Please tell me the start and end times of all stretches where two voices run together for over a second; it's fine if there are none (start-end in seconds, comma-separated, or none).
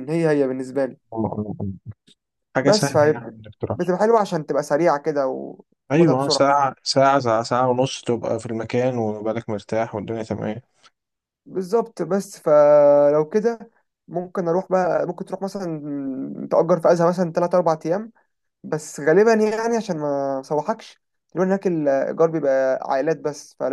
2.6-3.9